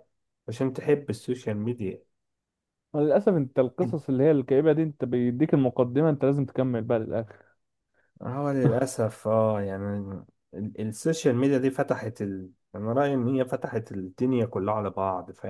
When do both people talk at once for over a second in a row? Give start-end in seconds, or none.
none